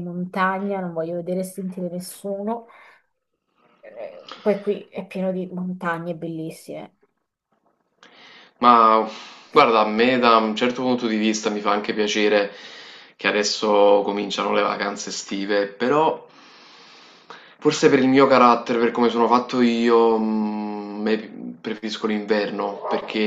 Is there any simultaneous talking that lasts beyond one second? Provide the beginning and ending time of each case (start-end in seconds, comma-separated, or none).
none